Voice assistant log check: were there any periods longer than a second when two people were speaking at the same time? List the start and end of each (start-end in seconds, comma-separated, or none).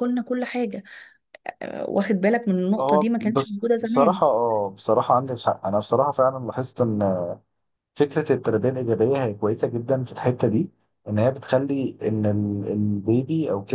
2.8-4.2